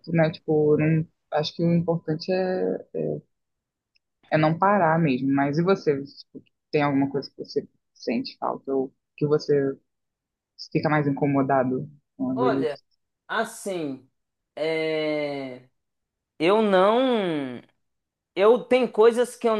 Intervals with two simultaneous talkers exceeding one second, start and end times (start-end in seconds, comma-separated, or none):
none